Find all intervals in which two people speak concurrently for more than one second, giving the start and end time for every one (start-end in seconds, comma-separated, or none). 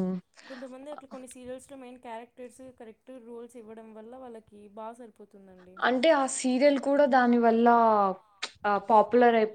none